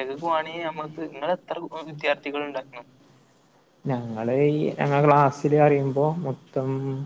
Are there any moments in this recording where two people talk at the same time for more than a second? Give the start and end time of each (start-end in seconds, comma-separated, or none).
none